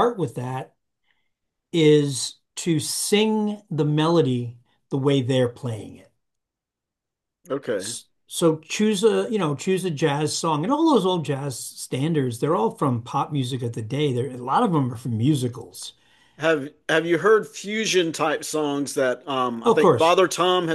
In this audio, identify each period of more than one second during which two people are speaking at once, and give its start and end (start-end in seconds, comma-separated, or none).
none